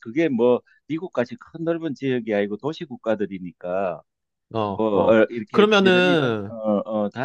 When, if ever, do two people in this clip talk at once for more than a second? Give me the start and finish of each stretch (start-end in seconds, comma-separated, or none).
4.7-6.5